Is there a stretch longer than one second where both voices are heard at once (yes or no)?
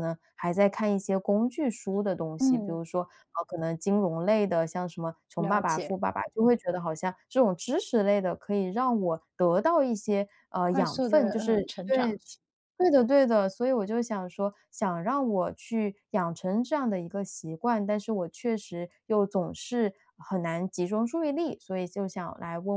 yes